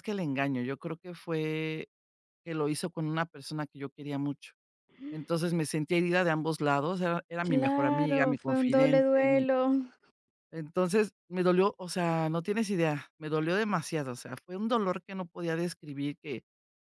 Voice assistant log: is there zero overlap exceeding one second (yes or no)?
no